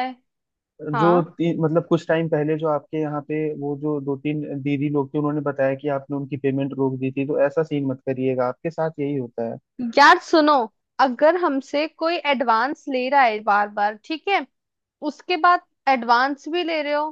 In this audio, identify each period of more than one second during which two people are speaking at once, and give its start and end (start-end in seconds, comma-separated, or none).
none